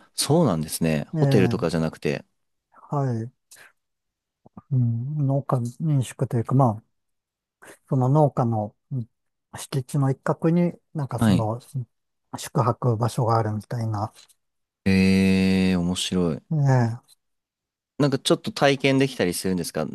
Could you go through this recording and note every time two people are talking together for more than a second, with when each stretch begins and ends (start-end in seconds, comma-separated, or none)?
none